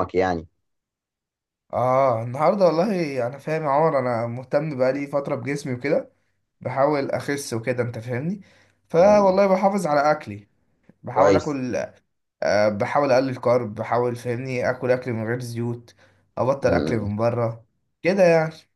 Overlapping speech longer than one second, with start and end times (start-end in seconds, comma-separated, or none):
none